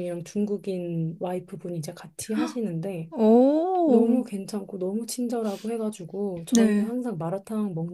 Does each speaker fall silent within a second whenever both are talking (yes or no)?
yes